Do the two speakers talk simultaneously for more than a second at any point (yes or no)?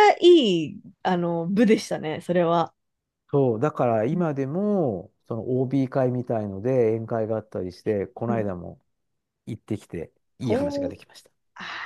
no